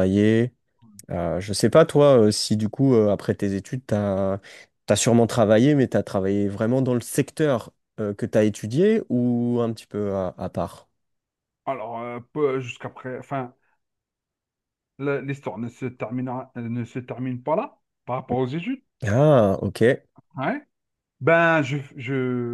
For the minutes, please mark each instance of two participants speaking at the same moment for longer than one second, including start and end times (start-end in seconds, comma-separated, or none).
none